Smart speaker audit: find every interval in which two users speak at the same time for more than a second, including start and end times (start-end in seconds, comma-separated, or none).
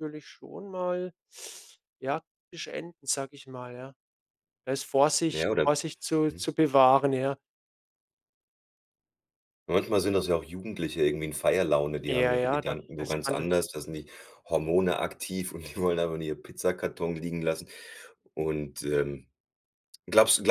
12.1-13.5